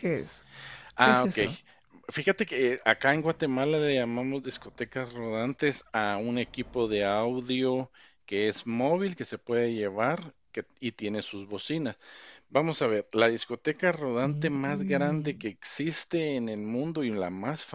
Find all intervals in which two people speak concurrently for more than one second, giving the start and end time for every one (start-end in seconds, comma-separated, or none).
14.2-15.5